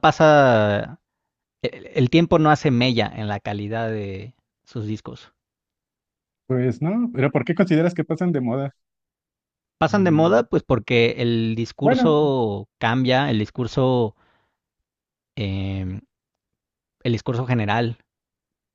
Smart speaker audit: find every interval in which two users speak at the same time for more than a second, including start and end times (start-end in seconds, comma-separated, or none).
none